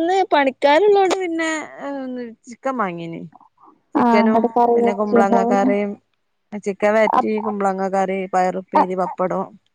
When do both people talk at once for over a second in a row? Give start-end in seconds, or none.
4.0-5.7